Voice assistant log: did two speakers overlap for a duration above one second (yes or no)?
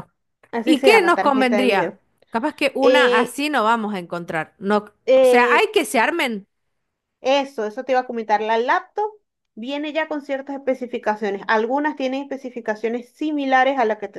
yes